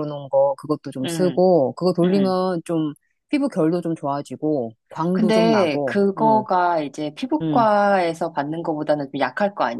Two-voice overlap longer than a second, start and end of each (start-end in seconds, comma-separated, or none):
5.1-6.4